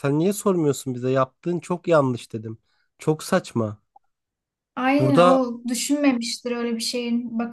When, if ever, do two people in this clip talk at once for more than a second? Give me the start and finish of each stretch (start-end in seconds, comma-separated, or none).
none